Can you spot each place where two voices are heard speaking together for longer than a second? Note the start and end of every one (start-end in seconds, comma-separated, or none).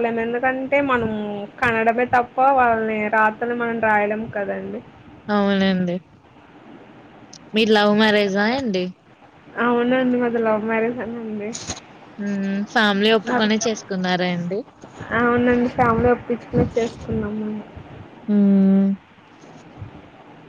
none